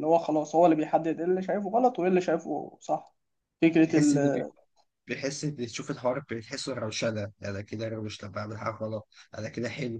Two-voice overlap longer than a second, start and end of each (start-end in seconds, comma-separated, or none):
none